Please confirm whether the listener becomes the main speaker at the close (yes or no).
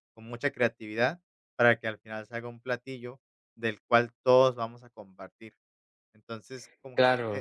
no